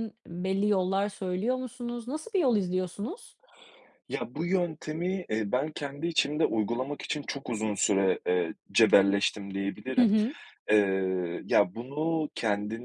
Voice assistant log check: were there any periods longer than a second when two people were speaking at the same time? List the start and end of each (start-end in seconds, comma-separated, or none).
none